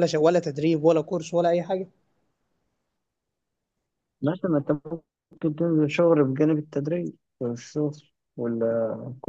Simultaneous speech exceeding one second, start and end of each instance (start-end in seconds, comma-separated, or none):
none